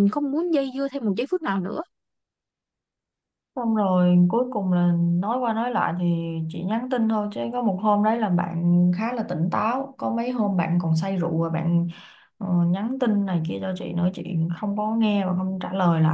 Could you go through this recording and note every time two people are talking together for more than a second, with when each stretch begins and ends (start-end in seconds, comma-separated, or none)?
none